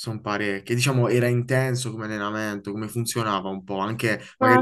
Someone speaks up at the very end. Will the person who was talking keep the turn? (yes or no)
no